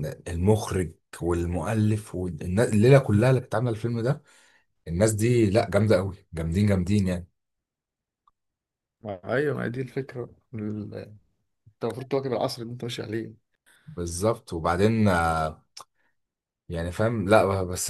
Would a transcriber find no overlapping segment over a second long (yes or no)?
yes